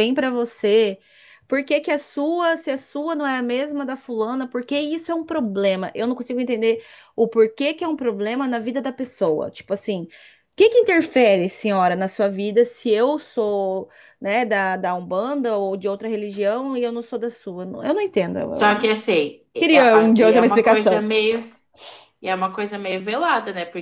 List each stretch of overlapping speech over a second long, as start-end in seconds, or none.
19.6-21.1